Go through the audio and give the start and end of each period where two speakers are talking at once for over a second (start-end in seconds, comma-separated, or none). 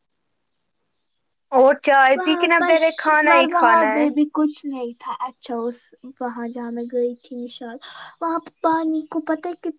2.2-4.1